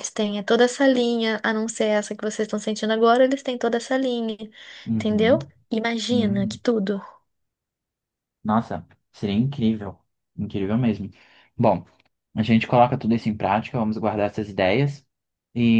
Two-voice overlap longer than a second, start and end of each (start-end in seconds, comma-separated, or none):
none